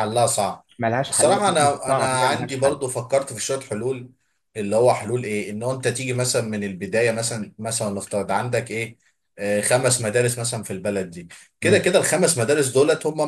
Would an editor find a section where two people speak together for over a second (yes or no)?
yes